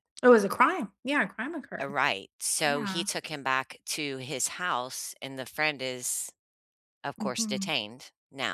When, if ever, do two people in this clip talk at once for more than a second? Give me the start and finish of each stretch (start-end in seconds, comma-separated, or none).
none